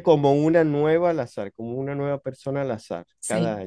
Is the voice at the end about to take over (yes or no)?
yes